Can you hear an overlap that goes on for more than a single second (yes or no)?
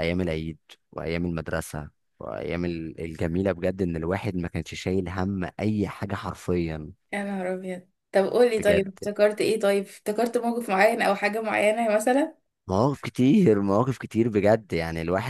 no